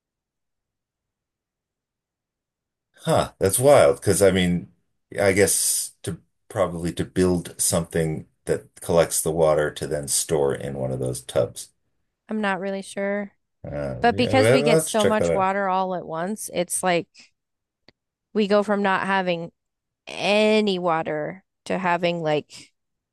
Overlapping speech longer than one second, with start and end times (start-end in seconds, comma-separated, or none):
14.0-15.5